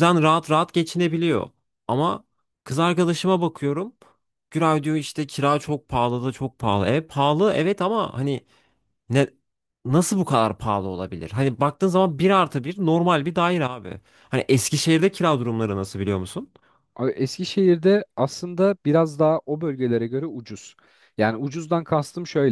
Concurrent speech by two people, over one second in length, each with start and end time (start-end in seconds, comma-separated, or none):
none